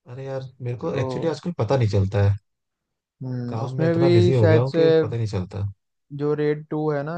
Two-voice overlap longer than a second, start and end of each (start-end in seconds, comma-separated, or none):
3.5-4.8